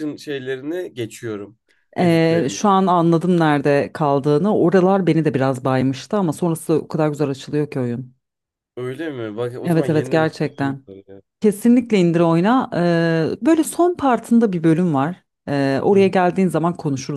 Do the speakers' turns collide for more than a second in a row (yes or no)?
yes